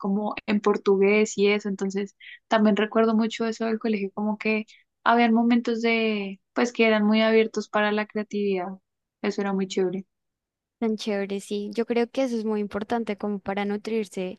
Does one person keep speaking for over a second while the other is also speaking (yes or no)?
no